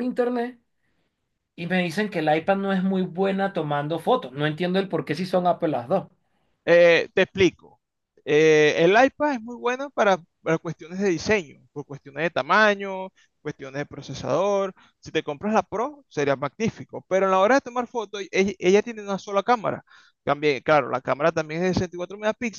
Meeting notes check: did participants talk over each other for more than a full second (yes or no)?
no